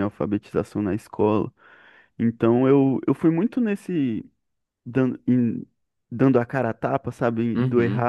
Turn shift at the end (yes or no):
no